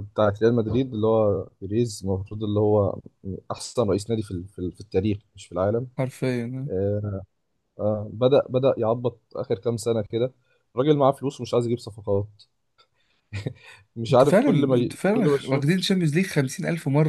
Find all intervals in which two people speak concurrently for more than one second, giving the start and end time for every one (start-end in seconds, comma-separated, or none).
14.1-15.8